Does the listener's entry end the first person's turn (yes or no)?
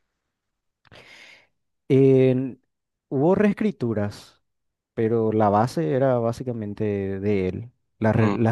no